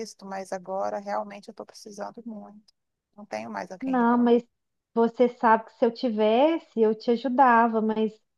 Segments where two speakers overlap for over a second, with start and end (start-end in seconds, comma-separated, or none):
none